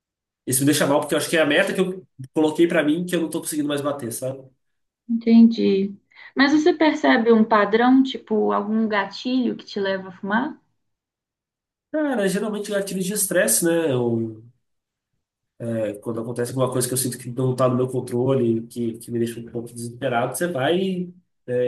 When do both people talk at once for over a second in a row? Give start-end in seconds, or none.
none